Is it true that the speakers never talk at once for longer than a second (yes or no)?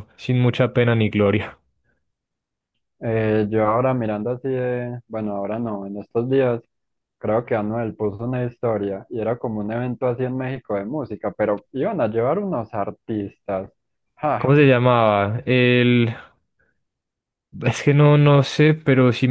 yes